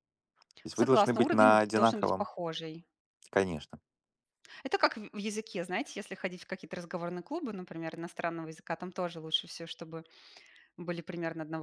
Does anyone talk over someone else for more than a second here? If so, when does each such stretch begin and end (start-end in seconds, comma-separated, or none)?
0.7-2.3